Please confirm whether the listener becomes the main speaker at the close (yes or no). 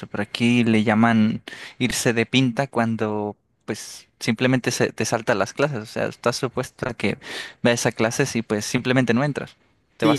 yes